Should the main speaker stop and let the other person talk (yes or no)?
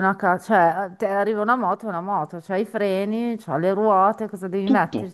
yes